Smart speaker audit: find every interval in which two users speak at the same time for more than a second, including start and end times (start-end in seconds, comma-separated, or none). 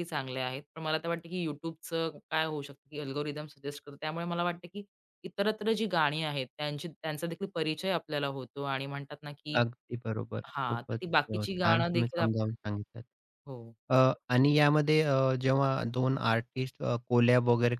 10.6-12.4